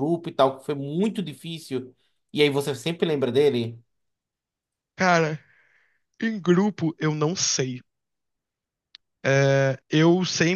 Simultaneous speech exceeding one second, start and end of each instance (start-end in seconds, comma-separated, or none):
none